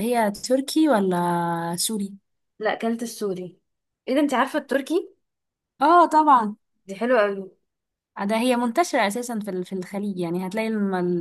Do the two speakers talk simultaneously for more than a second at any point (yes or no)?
no